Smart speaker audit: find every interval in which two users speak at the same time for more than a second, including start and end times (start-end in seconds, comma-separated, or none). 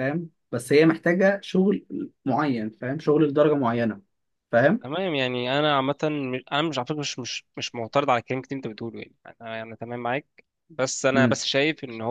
none